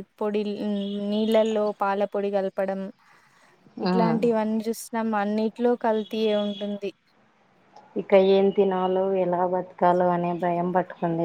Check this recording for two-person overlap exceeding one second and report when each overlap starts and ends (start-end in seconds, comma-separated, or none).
none